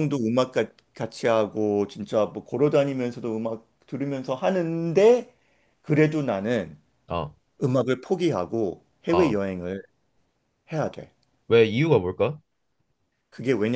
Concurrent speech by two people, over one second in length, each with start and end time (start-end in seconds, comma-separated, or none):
none